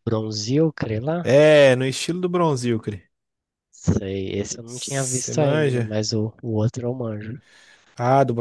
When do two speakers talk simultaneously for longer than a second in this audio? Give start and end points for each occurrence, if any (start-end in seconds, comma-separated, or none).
4.7-5.9